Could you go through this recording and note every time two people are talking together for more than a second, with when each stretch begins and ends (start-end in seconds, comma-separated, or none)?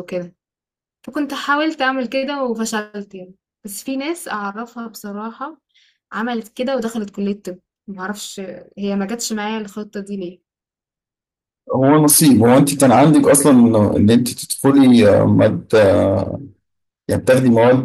none